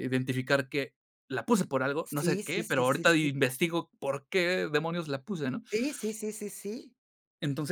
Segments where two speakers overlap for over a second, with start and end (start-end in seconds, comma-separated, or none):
2.0-3.3